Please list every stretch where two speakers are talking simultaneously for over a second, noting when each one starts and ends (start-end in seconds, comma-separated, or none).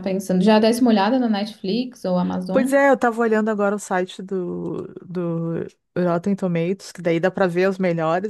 none